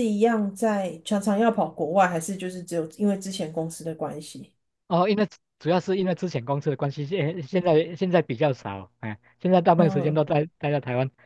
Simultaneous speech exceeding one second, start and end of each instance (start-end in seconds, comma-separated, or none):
none